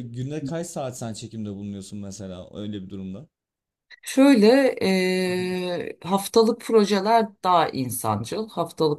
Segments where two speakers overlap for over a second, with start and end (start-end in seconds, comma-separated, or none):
none